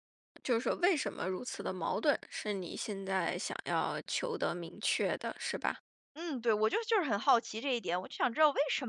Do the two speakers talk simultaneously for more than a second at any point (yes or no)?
no